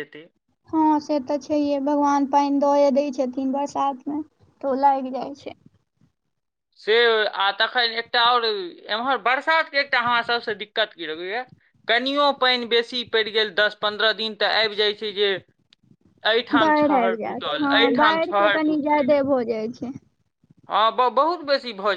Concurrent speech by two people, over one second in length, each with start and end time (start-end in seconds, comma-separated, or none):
16.6-19.1